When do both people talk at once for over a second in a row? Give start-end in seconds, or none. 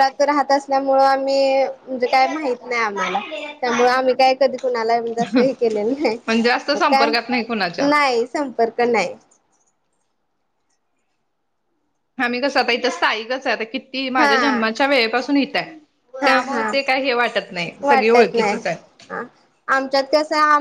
none